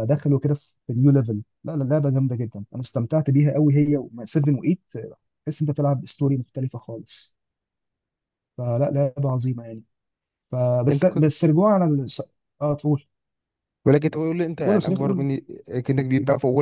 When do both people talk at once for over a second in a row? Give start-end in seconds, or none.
none